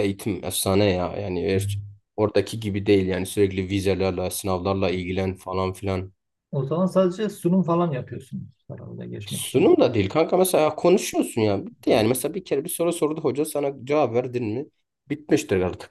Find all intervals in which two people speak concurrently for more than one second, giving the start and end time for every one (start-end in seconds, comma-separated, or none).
none